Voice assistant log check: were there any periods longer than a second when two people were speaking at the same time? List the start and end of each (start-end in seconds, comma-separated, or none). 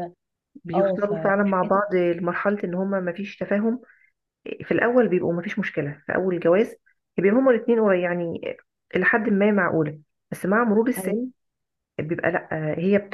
0.7-2.0